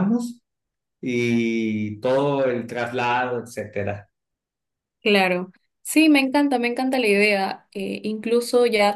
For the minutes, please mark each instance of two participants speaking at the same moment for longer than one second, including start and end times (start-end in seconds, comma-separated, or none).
none